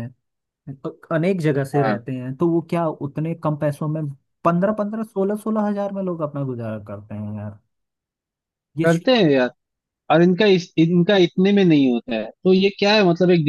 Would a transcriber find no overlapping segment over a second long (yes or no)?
yes